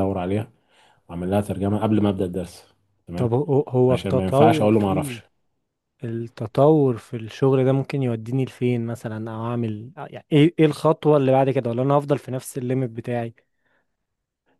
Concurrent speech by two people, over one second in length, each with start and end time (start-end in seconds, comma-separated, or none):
3.9-5.2